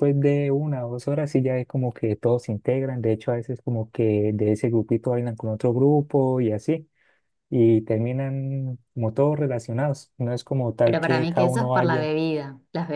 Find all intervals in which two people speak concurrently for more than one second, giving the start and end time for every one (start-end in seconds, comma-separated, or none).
10.8-12.1